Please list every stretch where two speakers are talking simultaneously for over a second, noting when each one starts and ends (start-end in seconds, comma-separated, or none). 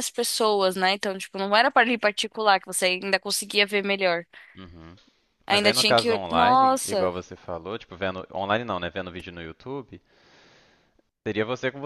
5.5-7.1